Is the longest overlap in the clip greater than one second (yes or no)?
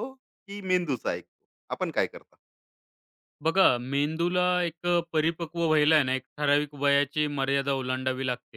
no